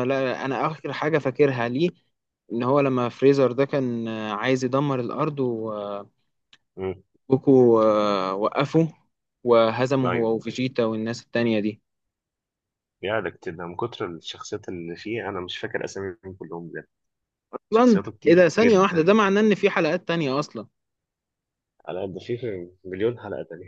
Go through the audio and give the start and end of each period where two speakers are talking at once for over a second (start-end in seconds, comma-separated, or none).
17.7-19.1